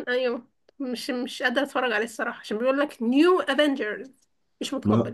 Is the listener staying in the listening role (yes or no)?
no